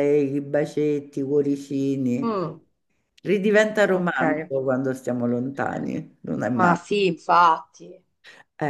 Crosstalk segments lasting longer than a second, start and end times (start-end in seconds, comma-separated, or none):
none